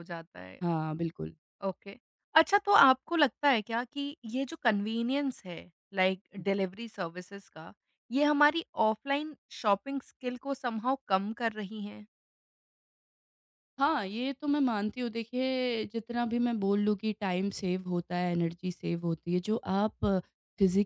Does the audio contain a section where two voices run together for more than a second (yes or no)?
no